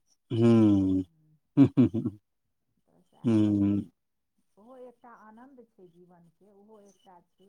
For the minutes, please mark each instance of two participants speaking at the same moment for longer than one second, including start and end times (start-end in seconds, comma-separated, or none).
none